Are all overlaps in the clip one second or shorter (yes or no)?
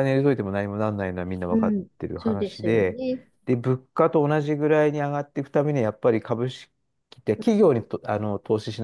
no